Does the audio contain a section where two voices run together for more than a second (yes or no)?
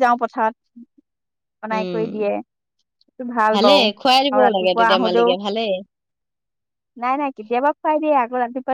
yes